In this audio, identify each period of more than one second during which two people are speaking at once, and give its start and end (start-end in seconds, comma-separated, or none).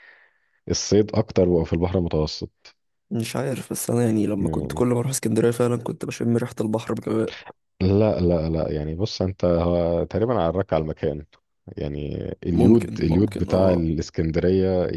12.5-13.8